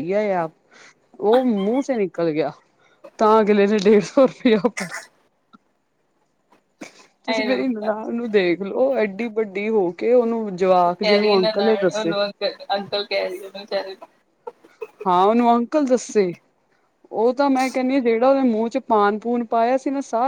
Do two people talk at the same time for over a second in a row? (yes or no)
yes